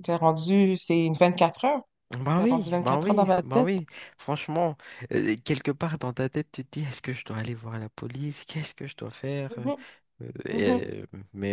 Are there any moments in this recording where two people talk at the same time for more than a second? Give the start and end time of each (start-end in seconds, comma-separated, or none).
2.4-3.7